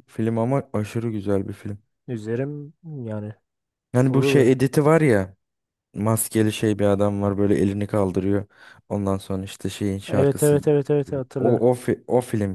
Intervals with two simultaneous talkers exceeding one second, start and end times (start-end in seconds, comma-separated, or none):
10.1-11.6